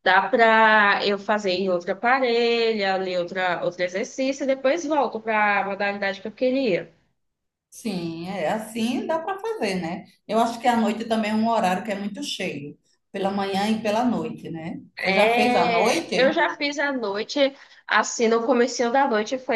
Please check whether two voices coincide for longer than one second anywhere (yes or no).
yes